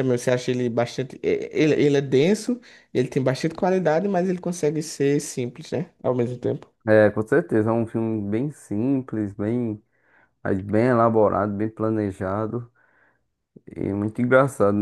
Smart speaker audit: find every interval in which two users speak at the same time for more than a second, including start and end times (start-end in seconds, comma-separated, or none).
none